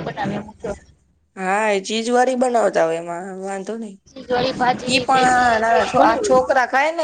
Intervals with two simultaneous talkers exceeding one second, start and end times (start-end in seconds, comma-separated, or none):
4.9-6.5